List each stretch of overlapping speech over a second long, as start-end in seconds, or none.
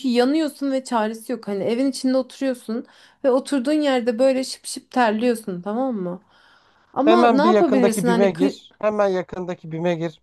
7.0-8.5